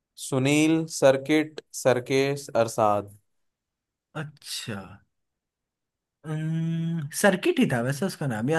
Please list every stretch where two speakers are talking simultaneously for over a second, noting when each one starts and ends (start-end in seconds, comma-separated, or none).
none